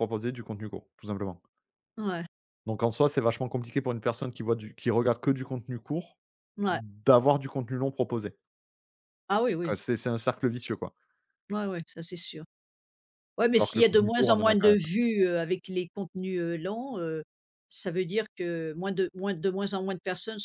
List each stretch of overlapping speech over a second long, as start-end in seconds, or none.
13.5-14.8